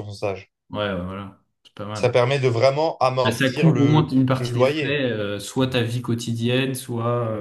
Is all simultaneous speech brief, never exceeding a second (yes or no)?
no